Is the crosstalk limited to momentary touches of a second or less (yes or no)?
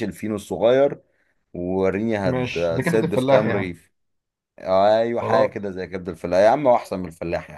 no